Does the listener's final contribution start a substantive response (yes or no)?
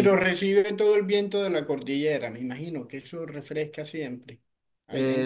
yes